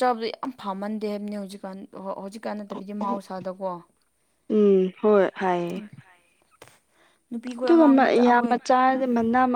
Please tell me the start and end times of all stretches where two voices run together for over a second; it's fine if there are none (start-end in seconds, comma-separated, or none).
none